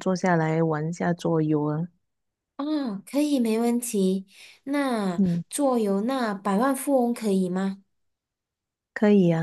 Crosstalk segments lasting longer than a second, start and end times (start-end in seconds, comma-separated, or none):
none